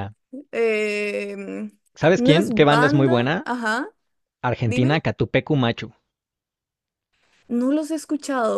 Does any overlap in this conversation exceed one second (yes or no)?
yes